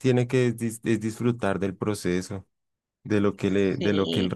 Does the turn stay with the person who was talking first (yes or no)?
yes